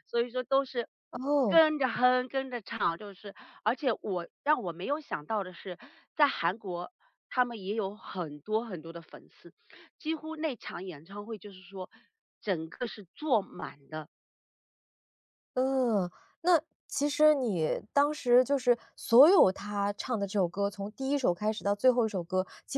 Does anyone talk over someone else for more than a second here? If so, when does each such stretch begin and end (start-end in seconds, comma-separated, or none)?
none